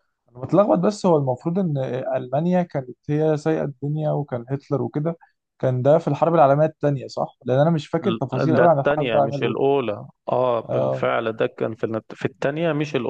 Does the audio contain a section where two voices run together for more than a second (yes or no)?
yes